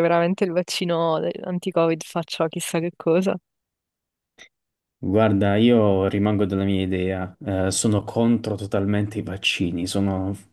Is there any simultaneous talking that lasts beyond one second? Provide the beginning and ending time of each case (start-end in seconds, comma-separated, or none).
none